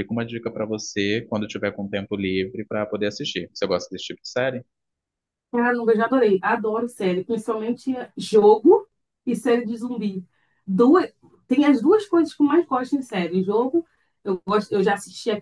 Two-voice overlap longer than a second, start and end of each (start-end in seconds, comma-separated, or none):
none